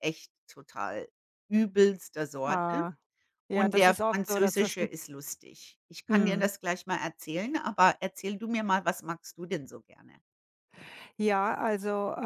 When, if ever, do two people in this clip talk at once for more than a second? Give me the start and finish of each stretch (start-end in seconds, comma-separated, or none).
3.5-4.9